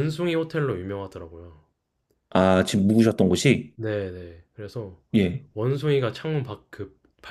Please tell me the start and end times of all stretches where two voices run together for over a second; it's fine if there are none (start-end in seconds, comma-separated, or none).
none